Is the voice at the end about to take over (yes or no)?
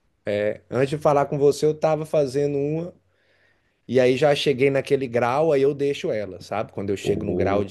no